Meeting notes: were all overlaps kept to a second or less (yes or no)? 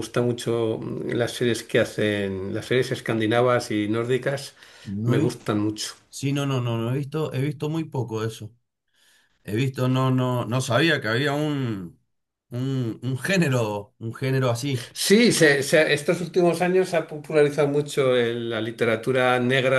yes